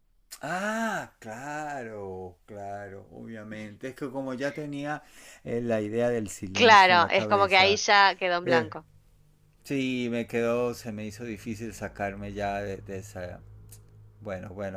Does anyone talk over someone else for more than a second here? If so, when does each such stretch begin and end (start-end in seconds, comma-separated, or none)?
6.5-7.8